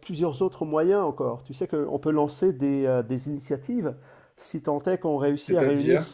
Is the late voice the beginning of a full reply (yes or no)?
no